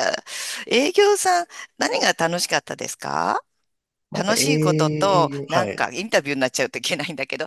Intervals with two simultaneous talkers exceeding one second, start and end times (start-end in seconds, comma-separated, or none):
4.1-5.9